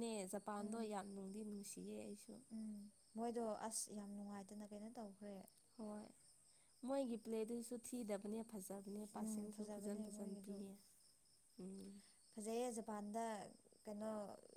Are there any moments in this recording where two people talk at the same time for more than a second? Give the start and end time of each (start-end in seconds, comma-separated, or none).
9.1-10.6